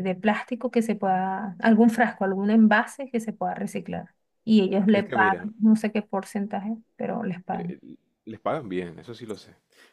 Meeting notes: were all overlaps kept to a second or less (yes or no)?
yes